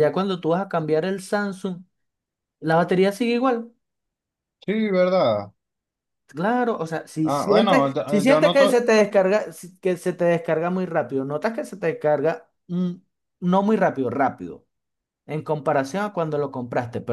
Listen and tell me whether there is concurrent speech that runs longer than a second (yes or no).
yes